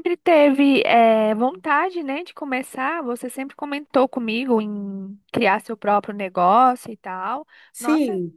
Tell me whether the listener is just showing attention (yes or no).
no